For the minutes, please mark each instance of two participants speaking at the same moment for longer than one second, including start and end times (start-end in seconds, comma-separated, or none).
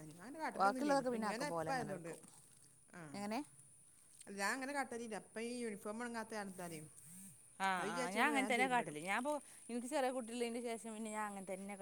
0.6-2.1